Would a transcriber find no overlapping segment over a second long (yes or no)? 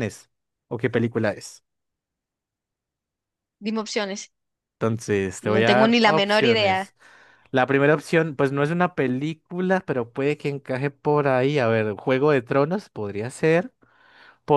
no